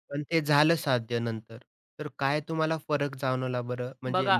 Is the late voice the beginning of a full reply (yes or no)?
no